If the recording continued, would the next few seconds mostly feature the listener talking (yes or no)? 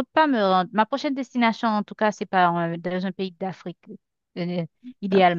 yes